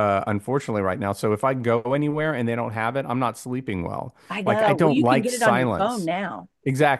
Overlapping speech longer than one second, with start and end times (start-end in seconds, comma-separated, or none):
4.3-6.1